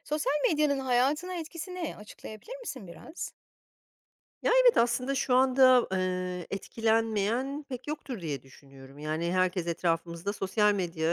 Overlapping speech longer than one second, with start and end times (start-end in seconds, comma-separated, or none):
none